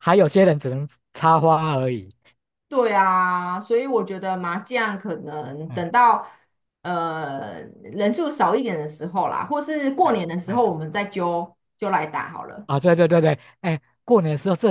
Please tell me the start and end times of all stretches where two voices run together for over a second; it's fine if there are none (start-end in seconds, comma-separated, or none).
none